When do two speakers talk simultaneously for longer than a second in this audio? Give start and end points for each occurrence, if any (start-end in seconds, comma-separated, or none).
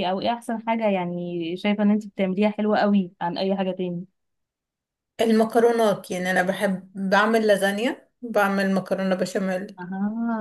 none